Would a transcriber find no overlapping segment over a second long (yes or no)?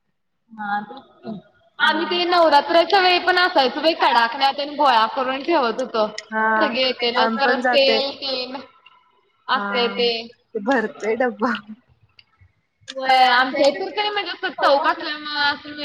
yes